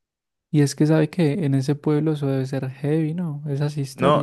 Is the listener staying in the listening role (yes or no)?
no